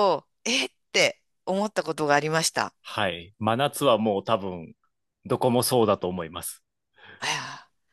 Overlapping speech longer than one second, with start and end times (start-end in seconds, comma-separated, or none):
none